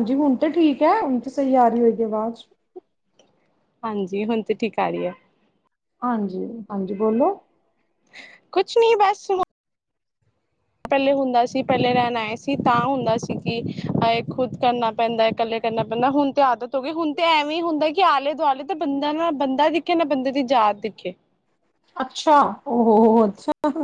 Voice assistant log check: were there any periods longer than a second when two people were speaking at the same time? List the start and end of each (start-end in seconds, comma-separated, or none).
none